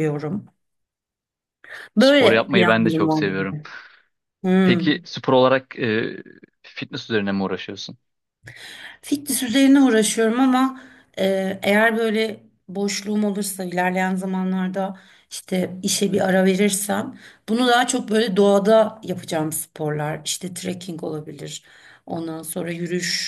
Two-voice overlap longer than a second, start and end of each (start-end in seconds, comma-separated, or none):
2.0-3.6